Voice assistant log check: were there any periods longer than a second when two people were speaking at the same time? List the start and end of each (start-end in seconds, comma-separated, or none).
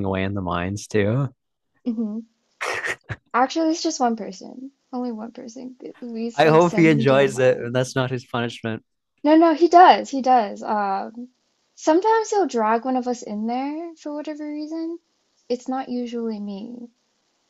6.3-7.9